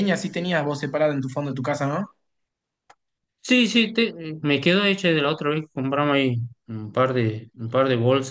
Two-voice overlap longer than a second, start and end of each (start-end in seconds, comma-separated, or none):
none